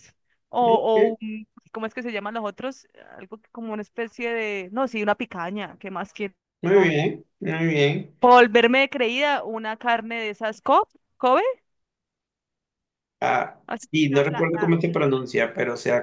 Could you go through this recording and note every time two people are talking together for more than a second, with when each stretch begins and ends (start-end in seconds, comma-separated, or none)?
13.7-15.2